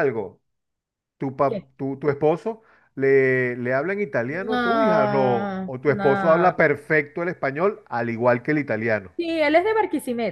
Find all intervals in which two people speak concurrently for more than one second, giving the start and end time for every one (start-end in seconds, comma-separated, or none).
4.3-6.7